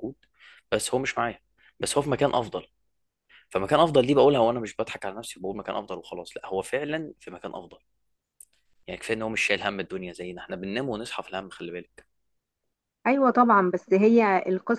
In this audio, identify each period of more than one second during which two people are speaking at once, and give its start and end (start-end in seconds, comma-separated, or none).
none